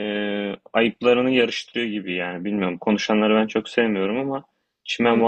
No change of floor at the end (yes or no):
no